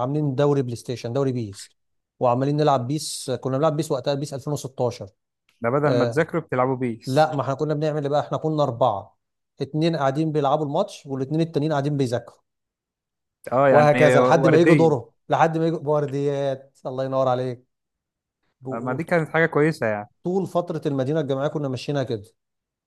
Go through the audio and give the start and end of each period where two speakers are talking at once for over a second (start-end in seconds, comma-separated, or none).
13.7-15.0